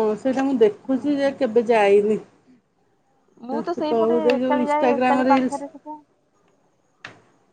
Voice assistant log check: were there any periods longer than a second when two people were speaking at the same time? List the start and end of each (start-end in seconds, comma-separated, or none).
3.9-5.6